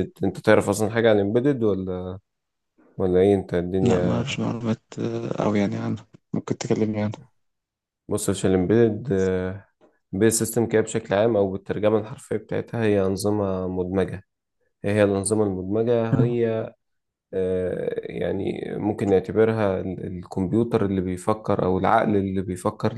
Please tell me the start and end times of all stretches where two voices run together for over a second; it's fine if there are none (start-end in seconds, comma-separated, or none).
none